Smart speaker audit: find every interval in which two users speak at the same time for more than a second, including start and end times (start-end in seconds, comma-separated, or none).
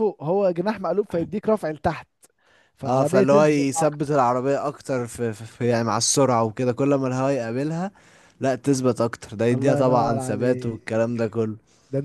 2.9-4.1, 9.5-10.8